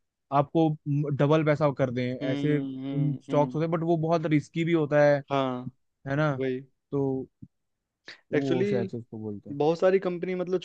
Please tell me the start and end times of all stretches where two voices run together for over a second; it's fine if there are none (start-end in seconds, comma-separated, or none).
2.2-3.6